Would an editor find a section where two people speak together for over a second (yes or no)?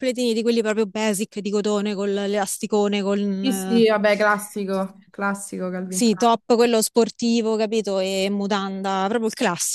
no